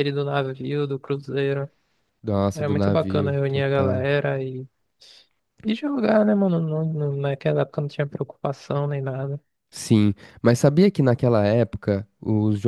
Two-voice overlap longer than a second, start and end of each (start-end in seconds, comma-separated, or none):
2.5-4.1